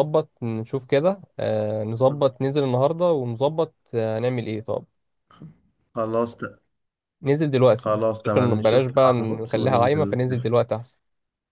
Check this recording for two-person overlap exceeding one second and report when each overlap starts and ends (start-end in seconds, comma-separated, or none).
7.8-10.5